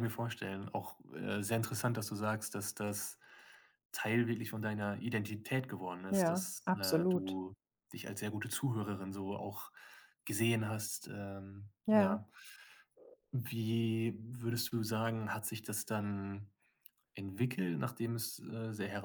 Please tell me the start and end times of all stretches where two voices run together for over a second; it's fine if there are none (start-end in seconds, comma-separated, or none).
6.1-7.4